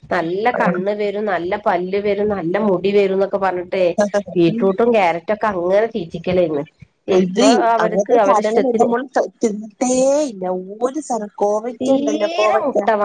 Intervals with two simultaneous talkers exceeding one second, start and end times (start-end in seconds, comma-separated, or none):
none